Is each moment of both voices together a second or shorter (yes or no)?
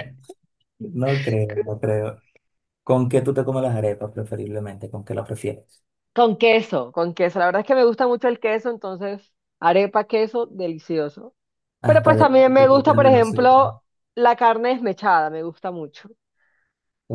no